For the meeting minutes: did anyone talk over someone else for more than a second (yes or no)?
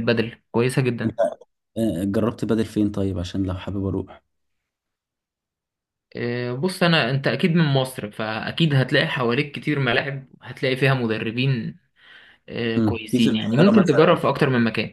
yes